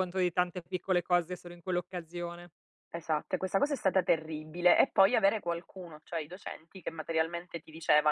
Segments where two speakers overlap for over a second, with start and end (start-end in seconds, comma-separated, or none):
none